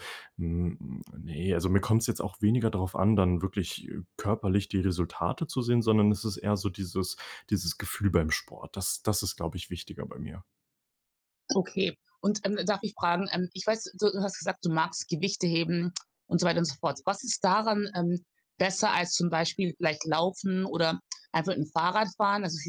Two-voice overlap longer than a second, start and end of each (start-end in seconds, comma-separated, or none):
none